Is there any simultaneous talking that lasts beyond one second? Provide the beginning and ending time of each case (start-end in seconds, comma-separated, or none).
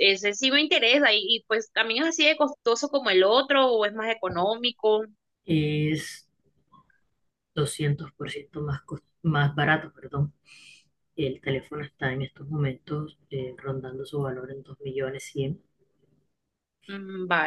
none